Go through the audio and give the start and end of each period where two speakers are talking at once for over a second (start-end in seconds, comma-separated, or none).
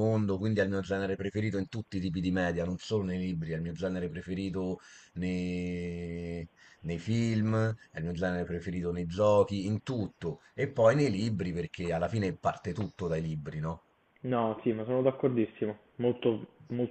none